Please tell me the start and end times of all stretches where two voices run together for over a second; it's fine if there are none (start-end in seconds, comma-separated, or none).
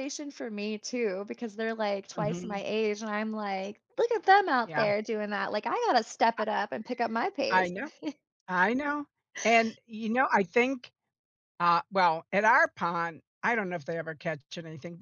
none